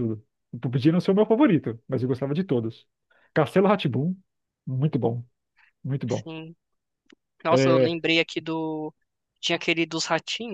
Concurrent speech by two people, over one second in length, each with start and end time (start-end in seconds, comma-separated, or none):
none